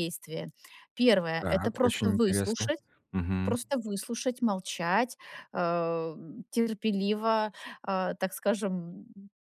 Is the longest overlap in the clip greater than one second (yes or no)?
yes